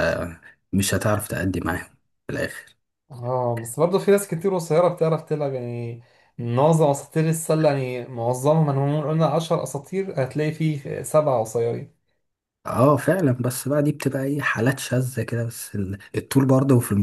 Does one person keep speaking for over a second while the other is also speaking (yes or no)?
no